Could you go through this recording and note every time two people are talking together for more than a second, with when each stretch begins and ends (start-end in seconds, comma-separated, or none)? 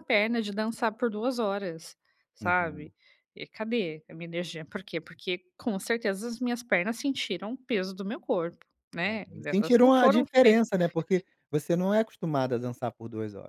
9.0-10.7